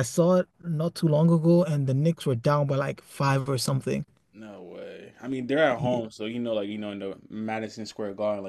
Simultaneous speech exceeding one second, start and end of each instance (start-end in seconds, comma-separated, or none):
none